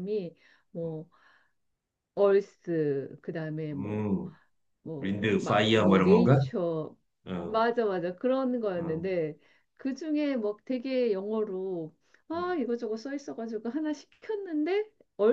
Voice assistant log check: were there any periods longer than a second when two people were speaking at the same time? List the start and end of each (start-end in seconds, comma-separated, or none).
5.0-6.4